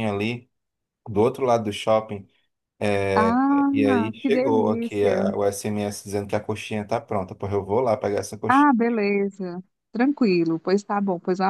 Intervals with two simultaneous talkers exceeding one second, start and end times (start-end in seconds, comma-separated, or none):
3.1-5.2